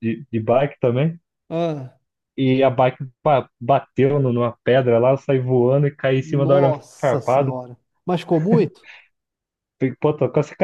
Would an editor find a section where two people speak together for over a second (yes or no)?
yes